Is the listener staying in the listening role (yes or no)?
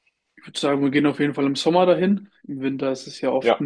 yes